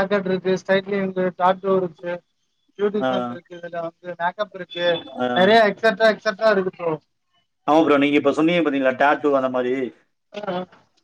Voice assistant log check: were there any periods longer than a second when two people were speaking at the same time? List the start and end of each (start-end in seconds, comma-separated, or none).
none